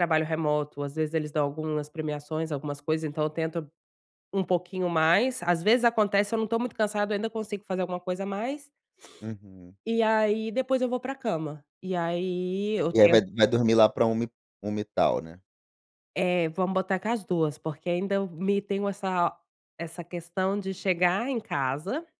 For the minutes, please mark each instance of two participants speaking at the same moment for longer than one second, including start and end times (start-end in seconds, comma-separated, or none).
none